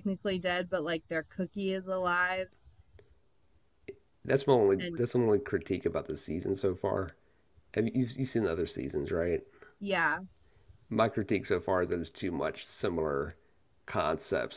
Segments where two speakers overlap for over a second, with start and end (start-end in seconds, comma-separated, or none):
none